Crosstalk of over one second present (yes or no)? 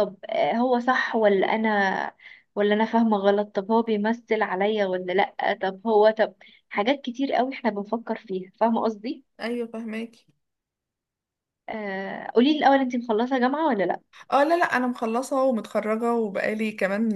no